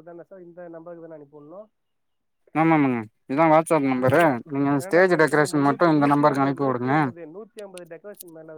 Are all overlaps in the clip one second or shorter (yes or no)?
no